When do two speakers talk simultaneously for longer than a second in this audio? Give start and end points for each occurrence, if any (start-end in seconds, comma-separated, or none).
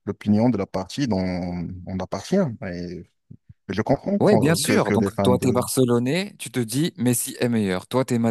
4.2-5.7